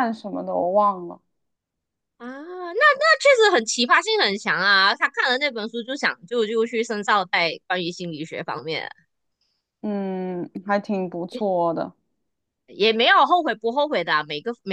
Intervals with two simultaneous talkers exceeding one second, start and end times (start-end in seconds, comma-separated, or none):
none